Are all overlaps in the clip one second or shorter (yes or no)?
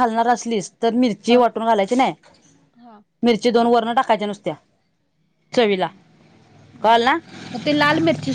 yes